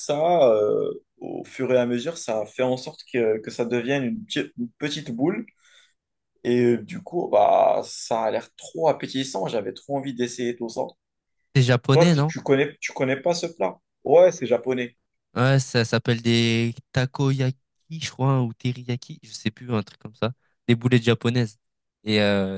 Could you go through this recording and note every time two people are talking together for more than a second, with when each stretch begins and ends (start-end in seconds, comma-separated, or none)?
none